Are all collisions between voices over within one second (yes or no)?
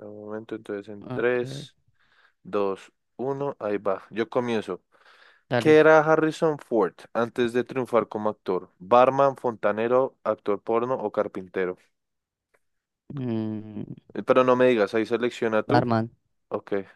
yes